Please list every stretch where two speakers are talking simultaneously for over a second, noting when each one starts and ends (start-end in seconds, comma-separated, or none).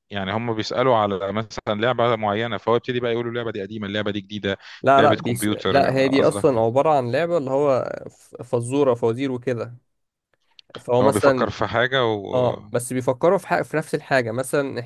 5.0-6.6